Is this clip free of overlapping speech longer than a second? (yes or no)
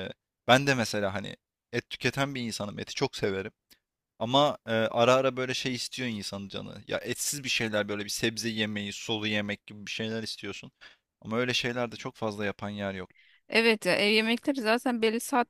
yes